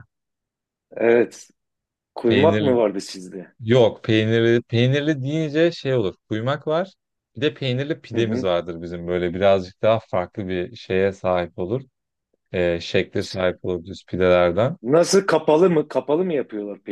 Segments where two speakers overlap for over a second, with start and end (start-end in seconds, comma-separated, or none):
none